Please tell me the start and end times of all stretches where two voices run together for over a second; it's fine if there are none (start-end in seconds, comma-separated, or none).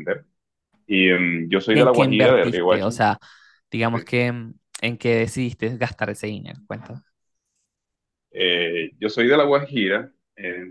1.7-3.0